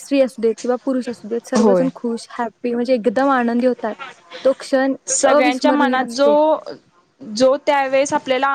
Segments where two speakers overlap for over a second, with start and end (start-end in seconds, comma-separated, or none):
none